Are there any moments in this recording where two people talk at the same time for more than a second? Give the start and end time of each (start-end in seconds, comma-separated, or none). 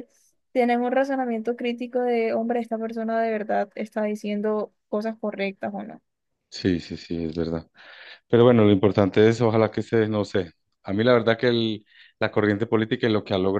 none